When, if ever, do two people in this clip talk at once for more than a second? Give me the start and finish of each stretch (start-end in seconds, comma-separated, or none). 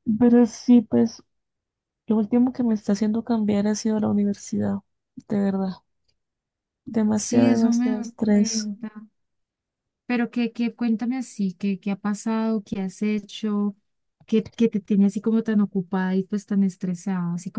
7.1-8.7